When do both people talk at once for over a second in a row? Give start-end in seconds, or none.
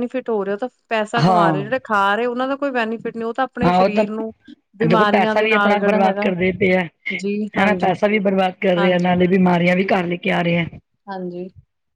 4.9-6.3